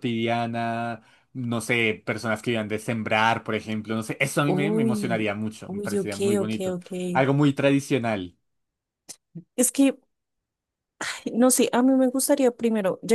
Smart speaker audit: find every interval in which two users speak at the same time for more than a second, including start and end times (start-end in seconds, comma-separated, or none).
4.5-6.9